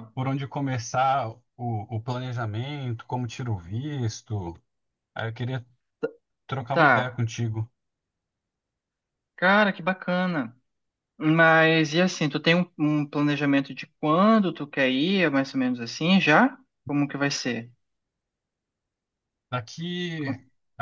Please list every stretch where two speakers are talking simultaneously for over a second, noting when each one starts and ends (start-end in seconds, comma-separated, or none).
none